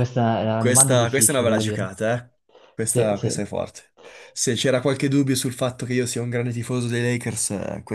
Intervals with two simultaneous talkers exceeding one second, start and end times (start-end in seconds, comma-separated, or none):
0.6-1.9